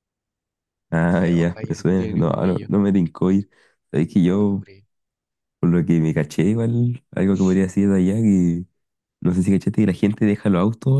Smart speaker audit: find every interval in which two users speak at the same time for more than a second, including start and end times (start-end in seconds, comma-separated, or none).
1.1-2.7